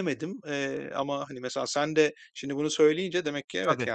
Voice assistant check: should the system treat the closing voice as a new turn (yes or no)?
no